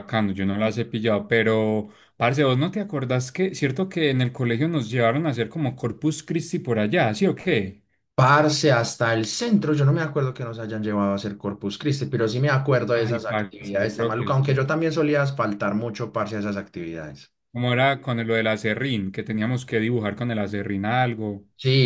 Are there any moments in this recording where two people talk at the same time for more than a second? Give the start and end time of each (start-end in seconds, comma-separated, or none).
12.9-14.6